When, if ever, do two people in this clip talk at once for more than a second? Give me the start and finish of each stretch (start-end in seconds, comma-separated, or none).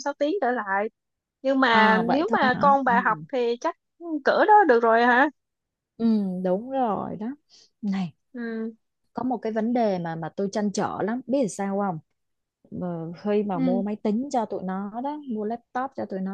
1.7-3.2